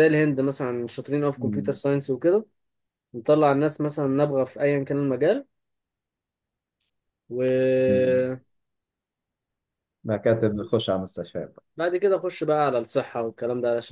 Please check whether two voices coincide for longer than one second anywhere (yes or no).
no